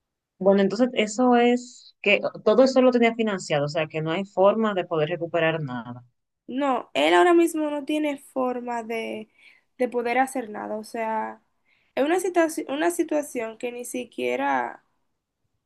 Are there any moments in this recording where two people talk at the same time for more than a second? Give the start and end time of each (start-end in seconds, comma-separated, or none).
none